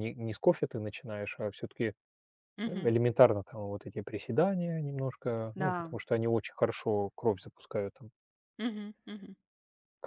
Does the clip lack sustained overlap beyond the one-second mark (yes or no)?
yes